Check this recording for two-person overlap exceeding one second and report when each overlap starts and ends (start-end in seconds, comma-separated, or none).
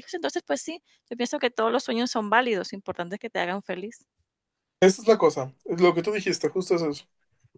none